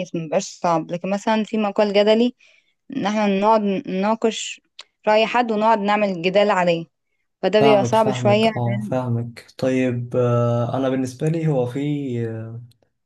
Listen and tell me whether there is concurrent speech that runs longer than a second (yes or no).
yes